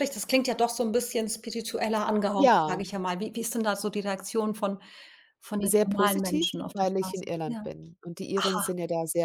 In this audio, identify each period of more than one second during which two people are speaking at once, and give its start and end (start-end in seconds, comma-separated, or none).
5.6-7.6